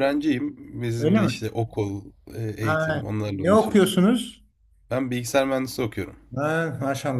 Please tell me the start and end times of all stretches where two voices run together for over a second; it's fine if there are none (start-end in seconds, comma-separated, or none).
2.6-3.9